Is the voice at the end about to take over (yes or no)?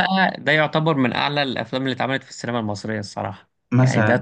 yes